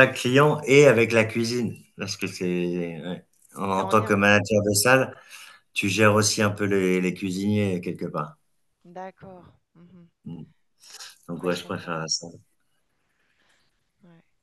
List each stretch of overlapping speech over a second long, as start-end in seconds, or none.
none